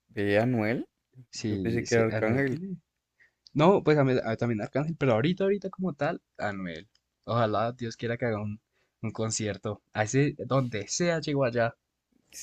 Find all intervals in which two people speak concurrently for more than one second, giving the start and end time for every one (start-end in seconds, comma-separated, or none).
1.3-2.6